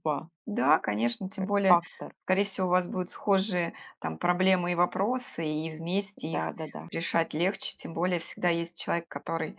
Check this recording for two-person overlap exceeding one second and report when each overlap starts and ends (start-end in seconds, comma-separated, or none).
none